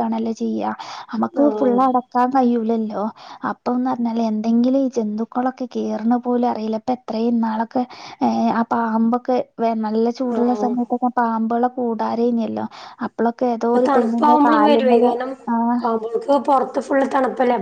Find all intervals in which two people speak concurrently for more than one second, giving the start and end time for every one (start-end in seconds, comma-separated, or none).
none